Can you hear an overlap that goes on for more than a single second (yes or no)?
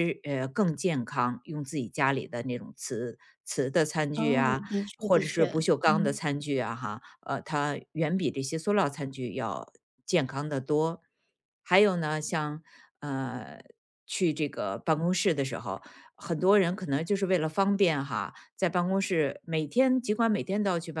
yes